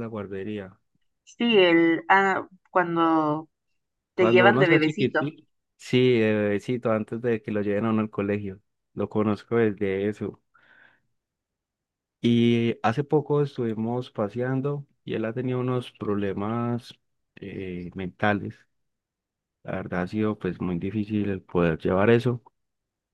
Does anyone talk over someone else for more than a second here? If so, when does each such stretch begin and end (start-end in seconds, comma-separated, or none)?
4.1-5.3